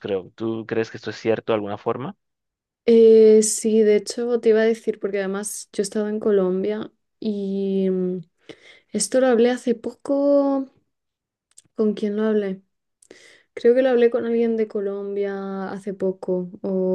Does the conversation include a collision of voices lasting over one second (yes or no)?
no